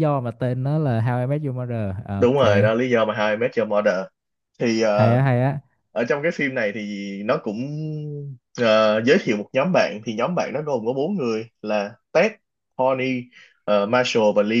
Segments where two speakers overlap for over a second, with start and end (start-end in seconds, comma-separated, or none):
none